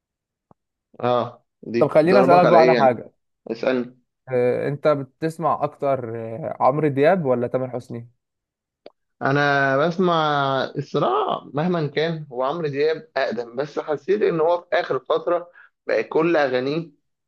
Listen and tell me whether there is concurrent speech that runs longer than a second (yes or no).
yes